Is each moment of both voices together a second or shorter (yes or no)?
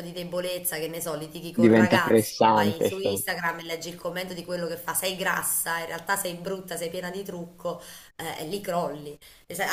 no